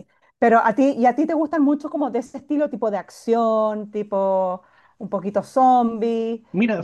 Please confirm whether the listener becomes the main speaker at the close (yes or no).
yes